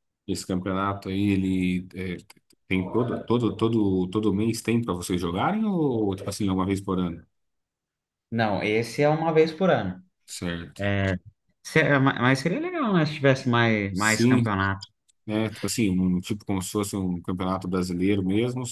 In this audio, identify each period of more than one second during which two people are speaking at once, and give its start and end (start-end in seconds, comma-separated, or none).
none